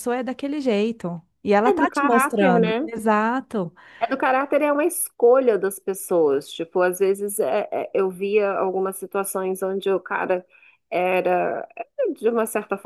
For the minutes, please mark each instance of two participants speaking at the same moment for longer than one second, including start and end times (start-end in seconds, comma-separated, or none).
1.6-2.9